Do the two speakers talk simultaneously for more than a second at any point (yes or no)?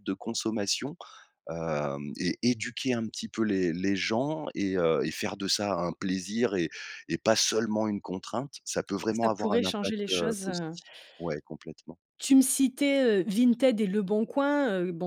yes